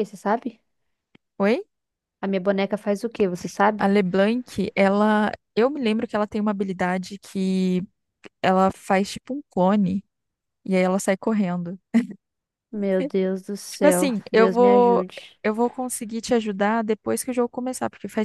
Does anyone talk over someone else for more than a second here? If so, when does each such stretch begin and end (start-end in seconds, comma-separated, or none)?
13.7-15.1